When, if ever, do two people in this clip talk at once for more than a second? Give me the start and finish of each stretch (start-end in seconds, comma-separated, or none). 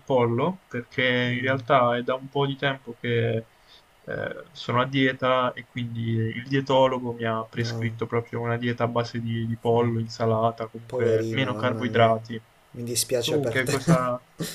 10.9-12.1